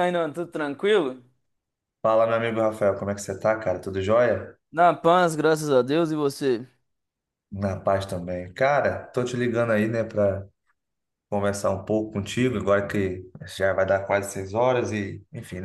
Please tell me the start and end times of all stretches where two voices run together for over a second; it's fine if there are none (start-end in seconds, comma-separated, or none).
none